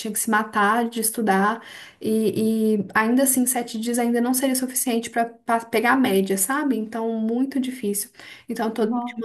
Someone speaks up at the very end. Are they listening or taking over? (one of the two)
listening